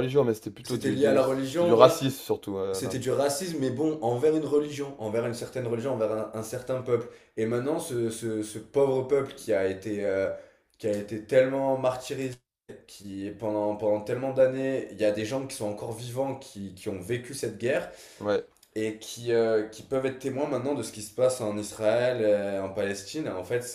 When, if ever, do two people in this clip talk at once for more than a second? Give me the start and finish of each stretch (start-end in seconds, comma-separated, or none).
0.6-2.0